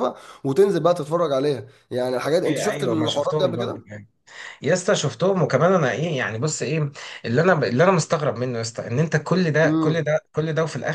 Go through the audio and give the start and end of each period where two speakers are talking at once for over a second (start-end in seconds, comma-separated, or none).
2.2-3.8